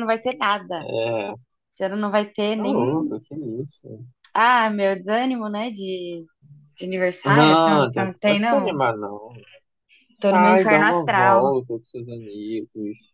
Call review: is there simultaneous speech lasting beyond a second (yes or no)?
yes